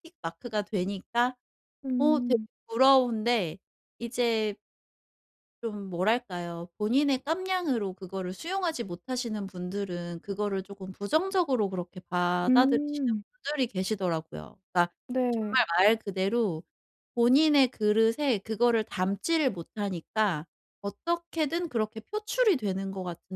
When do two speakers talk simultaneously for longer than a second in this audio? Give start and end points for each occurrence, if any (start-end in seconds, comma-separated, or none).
none